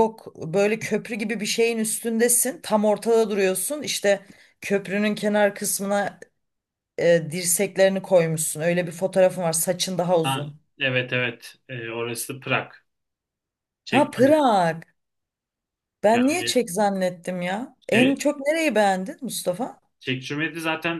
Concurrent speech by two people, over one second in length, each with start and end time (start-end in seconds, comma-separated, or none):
none